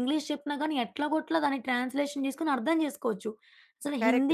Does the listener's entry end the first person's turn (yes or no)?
no